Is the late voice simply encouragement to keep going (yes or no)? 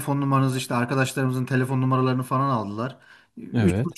yes